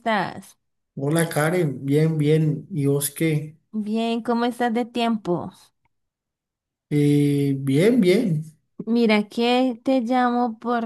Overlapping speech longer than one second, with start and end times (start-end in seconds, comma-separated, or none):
none